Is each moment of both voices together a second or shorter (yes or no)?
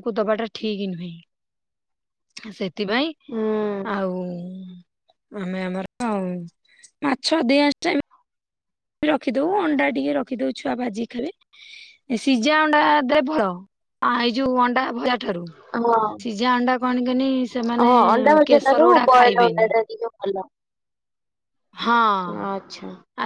yes